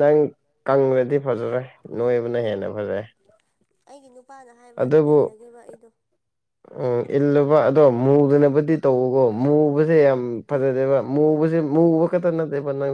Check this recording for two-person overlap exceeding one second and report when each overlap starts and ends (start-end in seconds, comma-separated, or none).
none